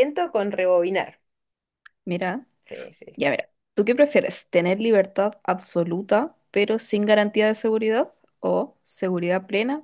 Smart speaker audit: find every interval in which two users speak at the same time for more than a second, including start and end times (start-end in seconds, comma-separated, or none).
none